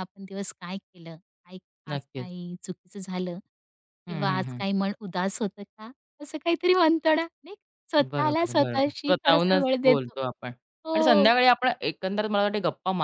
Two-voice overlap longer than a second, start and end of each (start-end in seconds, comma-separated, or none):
8.0-10.1